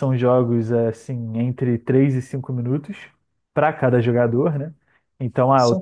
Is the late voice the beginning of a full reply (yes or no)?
no